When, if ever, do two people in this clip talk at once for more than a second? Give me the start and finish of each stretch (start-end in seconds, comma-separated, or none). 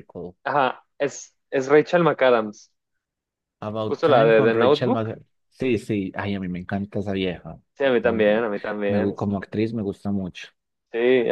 3.9-5.1